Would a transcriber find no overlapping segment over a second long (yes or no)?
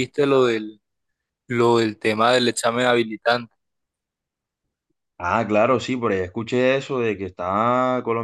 yes